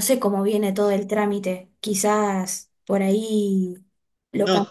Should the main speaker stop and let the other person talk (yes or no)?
yes